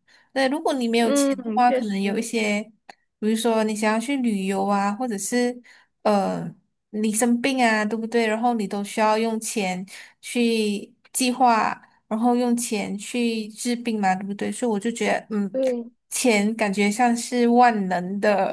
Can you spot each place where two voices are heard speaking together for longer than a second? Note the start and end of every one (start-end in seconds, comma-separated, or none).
1.0-2.2